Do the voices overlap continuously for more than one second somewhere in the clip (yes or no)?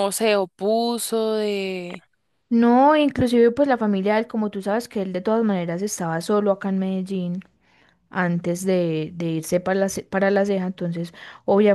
no